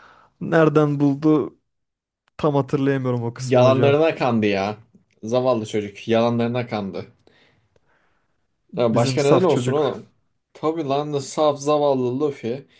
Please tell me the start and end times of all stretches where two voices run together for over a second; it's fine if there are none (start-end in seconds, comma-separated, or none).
8.8-10.1